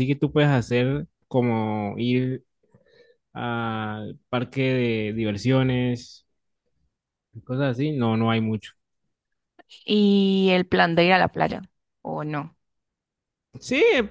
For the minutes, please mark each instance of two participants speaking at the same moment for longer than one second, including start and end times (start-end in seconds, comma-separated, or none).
none